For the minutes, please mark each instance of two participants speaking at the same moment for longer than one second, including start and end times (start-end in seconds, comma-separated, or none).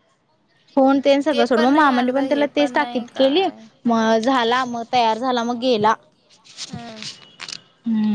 1.6-3.4